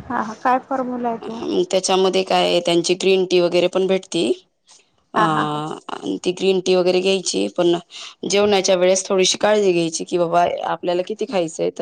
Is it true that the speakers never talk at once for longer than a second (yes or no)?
yes